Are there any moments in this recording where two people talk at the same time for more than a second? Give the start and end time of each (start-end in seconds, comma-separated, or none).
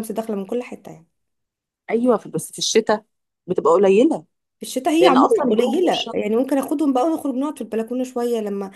5.0-6.4